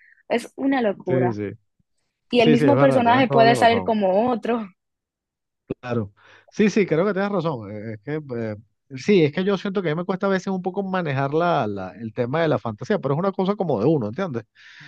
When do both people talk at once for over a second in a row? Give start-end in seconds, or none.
2.3-4.0